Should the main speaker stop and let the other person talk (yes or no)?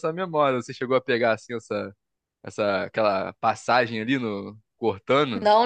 yes